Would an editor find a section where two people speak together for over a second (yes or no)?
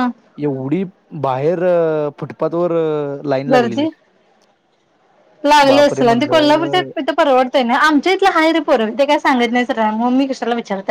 yes